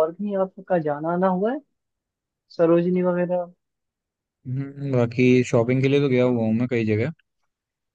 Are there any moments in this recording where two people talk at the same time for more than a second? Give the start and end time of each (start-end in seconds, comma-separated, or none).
none